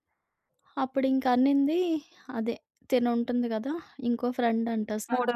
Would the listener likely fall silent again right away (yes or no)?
yes